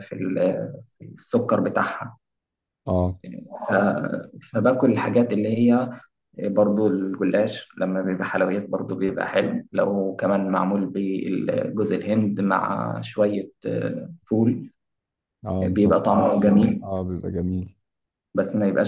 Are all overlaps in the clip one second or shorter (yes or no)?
no